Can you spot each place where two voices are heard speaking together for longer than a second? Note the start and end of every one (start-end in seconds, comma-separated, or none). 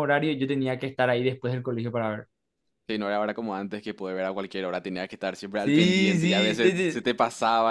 5.6-7.1